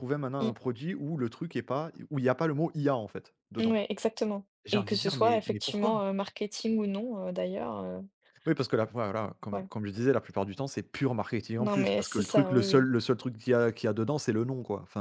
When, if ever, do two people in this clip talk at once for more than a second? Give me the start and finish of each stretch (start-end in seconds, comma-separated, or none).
4.7-6.0, 11.6-12.9